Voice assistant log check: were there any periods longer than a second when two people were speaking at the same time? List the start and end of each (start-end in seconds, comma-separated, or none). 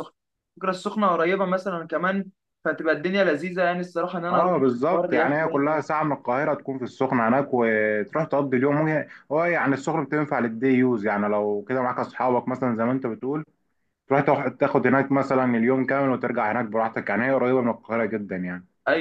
4.3-5.8